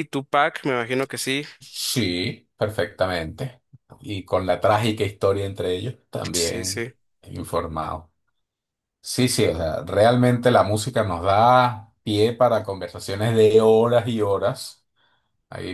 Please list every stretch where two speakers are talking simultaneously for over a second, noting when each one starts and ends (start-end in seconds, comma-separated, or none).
none